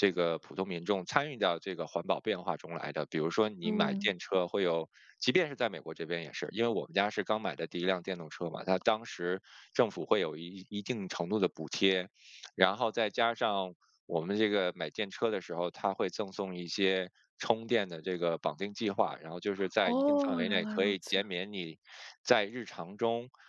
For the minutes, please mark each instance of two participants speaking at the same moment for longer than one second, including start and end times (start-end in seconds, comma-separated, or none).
19.8-21.2